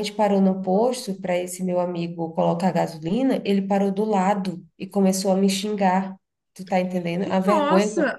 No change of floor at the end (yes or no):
no